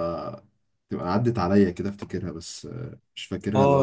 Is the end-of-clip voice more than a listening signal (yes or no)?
yes